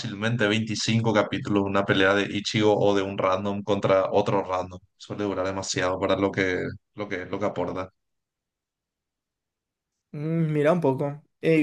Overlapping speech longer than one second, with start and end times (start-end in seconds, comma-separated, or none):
none